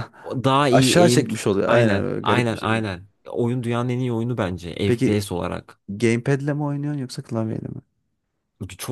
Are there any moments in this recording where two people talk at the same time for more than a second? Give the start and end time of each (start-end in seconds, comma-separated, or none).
0.7-2.9